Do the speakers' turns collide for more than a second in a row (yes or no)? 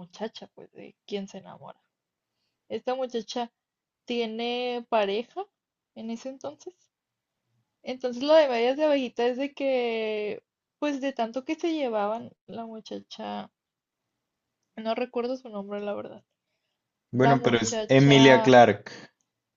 yes